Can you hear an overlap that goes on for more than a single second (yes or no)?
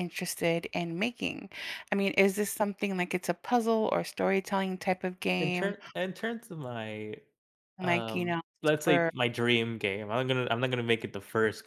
yes